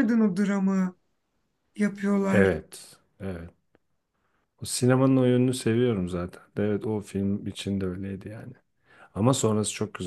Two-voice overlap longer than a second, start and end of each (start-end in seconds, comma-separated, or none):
none